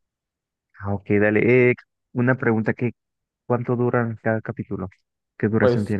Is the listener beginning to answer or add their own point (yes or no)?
yes